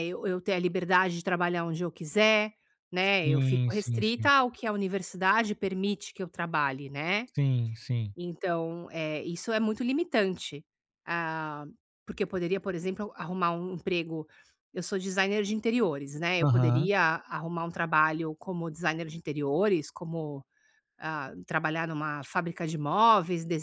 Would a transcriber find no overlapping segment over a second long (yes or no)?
no